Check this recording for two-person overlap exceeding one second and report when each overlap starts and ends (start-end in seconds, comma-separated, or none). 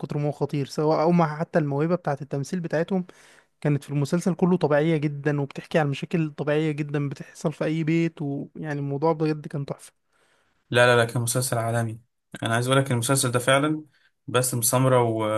none